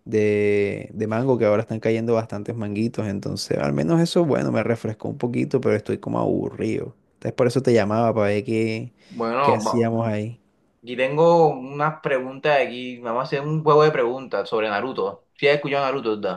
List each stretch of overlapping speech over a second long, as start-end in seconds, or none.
none